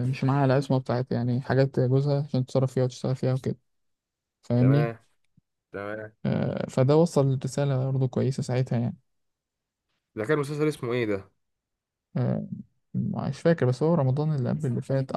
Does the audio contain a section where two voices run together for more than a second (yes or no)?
no